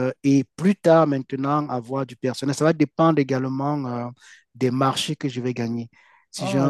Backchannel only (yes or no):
yes